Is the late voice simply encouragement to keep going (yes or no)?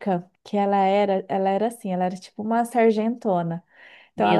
yes